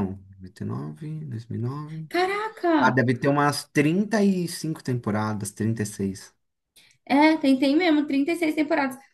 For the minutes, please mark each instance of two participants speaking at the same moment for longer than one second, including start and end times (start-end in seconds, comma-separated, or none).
none